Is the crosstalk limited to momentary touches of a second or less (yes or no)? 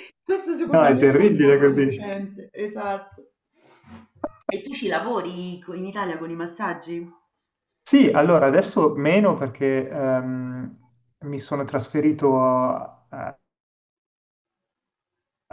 no